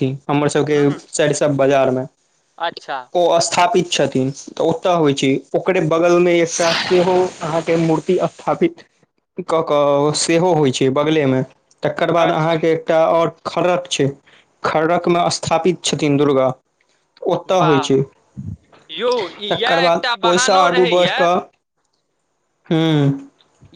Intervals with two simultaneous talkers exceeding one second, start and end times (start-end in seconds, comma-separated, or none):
19.5-21.2